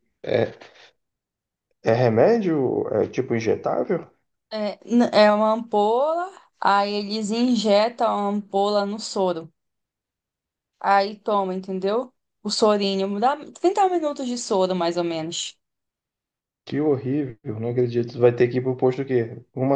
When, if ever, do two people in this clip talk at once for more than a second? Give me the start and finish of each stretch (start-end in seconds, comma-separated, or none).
none